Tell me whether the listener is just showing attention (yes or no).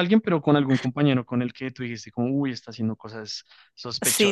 no